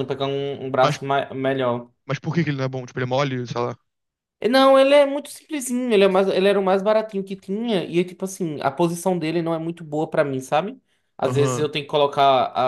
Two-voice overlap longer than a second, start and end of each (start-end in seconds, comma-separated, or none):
none